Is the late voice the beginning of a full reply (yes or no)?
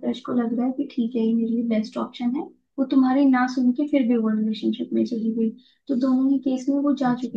no